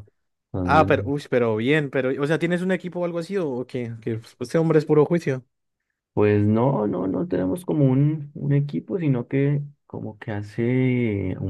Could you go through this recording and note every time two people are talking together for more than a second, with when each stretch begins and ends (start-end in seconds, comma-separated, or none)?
none